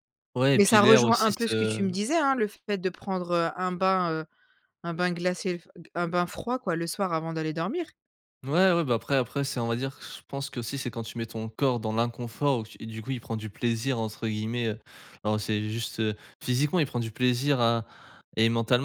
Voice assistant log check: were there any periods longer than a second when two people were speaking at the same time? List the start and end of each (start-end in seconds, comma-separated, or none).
0.7-1.9